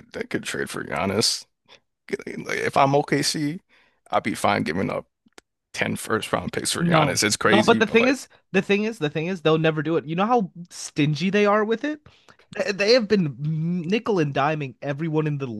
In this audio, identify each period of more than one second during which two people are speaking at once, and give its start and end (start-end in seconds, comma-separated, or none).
6.8-8.2